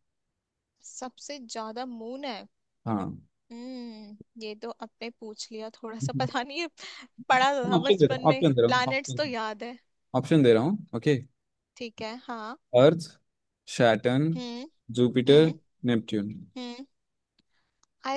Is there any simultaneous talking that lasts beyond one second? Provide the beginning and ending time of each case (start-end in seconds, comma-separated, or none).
7.8-9.3